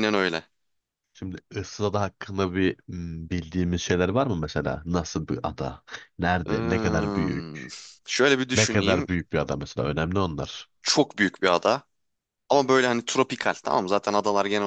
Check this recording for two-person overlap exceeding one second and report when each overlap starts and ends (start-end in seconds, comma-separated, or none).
6.5-7.7